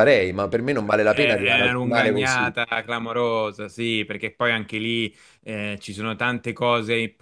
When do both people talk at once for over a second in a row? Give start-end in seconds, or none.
1.1-2.5